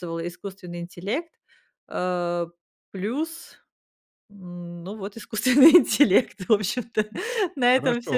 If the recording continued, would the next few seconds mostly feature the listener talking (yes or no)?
yes